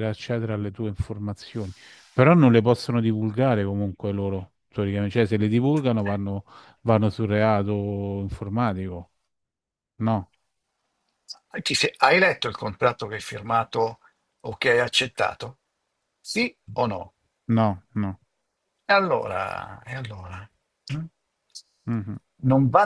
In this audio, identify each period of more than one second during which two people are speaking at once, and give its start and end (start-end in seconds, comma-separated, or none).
none